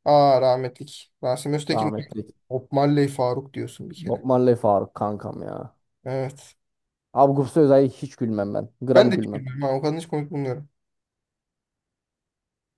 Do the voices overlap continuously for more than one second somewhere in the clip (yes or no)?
no